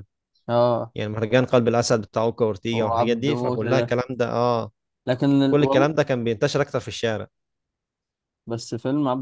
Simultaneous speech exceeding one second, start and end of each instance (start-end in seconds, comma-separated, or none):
2.7-4.0